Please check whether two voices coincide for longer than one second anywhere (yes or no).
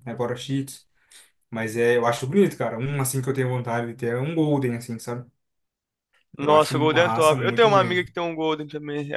yes